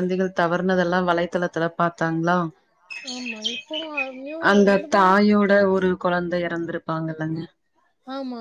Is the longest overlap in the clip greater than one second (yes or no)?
no